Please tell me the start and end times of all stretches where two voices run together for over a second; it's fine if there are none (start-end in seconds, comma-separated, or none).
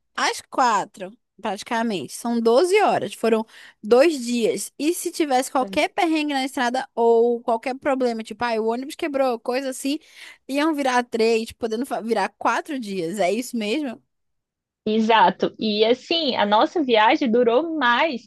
none